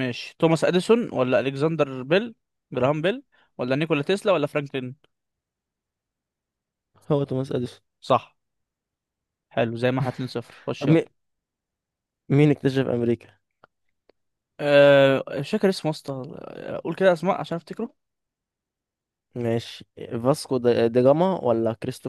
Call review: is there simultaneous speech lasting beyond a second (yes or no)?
no